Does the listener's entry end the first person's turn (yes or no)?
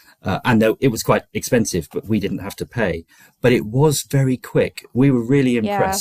no